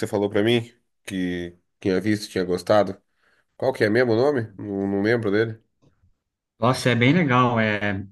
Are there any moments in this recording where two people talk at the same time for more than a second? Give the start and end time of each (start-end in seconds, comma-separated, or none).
none